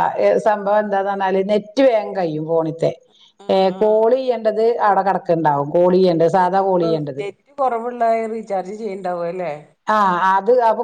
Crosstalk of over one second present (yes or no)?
no